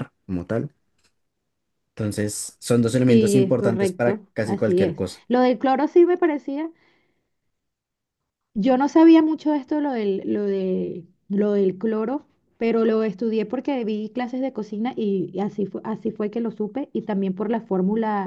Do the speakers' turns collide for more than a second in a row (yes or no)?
yes